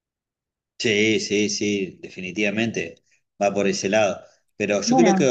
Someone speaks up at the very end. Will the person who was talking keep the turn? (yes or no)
yes